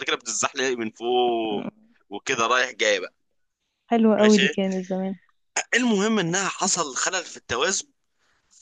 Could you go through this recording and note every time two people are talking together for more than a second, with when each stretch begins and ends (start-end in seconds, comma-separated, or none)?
none